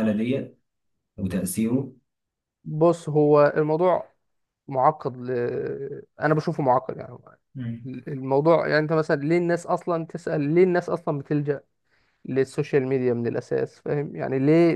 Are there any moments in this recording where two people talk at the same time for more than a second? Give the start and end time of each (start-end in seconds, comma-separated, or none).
none